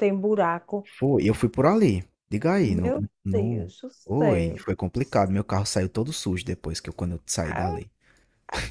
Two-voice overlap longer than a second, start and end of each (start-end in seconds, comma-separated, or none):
2.6-4.6